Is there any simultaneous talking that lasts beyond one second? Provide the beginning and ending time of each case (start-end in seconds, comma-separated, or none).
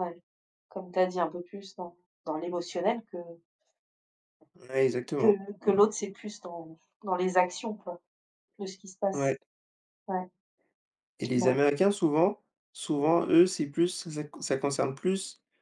none